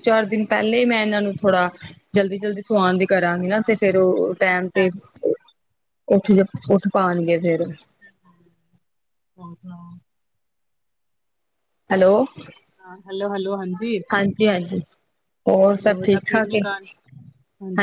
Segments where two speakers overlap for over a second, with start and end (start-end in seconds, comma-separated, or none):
none